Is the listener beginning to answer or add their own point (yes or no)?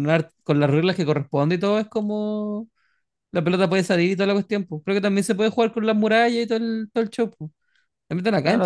yes